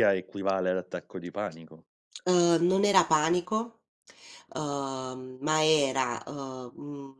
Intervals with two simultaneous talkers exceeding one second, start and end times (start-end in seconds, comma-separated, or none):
none